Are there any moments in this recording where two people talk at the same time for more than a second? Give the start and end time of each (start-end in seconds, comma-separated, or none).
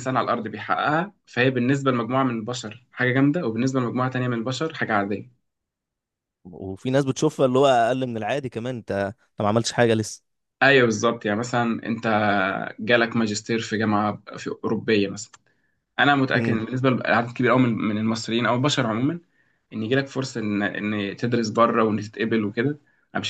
none